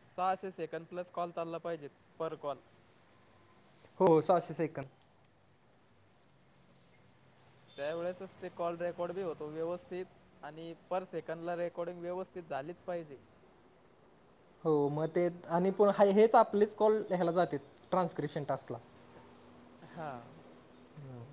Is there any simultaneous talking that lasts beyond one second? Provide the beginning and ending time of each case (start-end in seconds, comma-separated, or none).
none